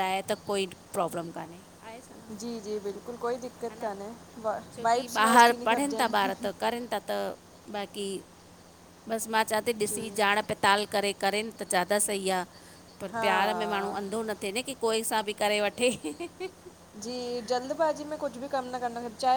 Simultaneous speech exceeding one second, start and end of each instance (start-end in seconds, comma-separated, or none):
4.8-6.3